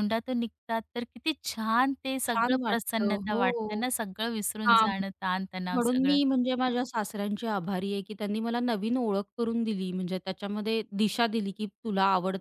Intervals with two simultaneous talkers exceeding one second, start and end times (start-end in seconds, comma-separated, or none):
2.3-3.9